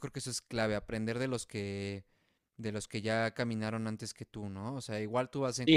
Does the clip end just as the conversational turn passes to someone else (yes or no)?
yes